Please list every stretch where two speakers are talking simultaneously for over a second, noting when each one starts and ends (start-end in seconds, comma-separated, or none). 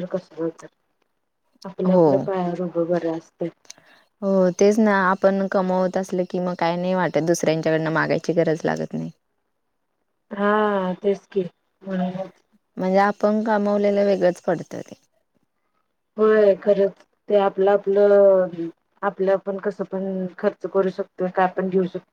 none